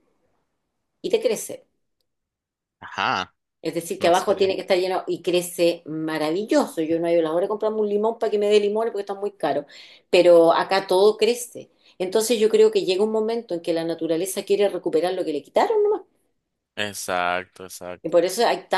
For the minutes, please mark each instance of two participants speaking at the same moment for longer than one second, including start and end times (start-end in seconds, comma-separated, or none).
none